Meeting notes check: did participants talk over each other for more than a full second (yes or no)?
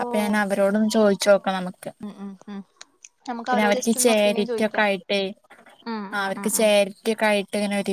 yes